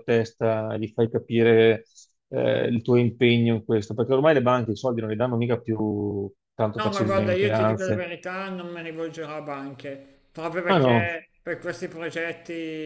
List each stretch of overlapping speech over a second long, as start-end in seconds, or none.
6.8-8.1